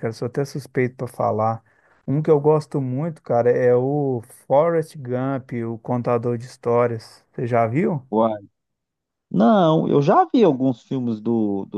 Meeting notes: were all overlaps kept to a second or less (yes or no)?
yes